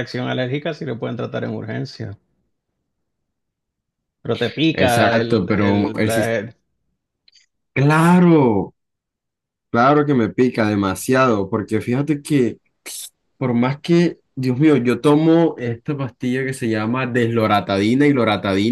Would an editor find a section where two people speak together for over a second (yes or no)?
yes